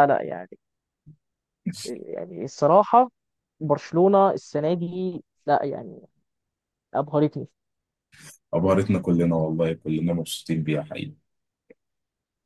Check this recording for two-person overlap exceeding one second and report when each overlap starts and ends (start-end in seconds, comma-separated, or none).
none